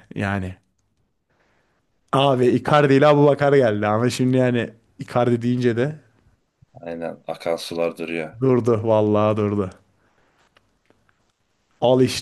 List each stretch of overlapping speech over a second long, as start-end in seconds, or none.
none